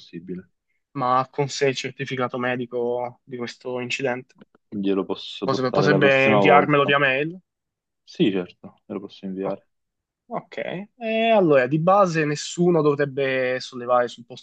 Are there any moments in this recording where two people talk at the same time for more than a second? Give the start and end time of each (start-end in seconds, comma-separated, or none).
5.4-7.0